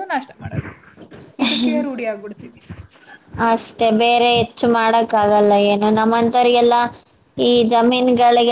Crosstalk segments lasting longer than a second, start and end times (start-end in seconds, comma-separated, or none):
none